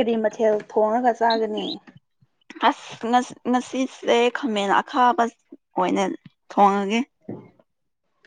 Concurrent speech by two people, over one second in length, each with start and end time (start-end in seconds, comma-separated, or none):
none